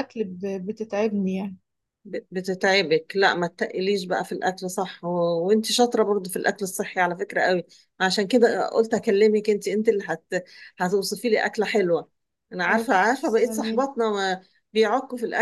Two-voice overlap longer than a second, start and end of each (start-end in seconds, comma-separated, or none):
12.7-13.9